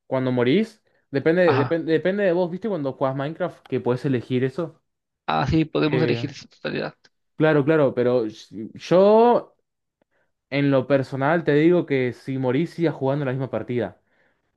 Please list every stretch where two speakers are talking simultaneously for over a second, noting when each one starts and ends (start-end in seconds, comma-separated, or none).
none